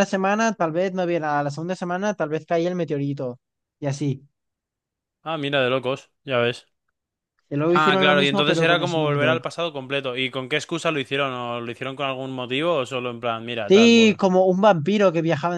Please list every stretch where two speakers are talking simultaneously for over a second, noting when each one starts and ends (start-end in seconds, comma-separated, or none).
7.8-9.4